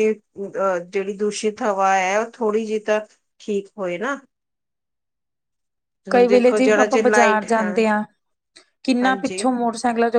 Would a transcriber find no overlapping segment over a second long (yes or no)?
no